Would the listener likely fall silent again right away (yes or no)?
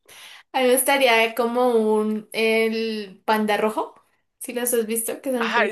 no